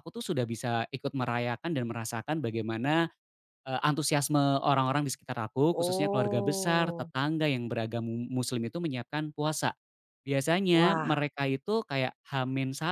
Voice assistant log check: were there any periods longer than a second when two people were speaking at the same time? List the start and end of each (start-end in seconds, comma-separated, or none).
5.7-7.1